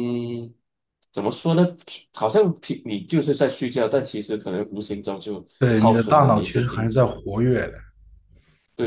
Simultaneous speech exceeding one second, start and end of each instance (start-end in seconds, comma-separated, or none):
5.6-7.1